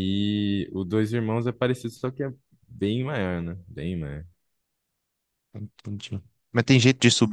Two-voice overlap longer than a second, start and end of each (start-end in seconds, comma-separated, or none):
none